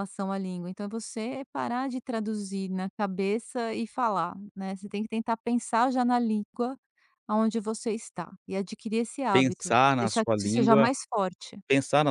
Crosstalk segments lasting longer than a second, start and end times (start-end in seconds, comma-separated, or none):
9.3-10.9